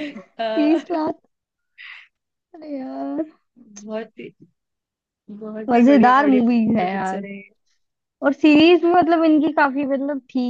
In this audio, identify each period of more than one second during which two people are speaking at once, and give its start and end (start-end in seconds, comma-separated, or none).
5.7-7.2